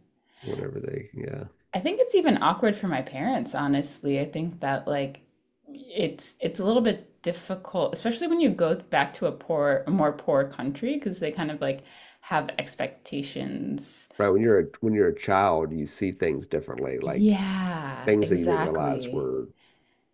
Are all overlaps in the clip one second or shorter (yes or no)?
no